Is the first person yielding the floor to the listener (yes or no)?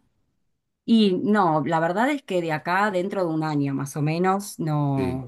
no